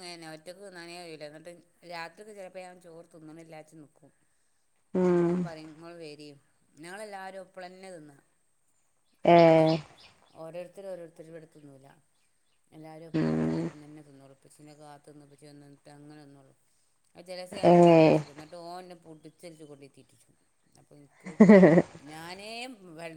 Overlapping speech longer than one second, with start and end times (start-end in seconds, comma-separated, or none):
none